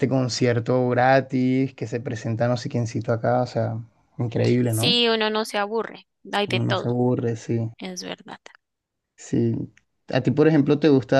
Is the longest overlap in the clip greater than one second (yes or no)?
no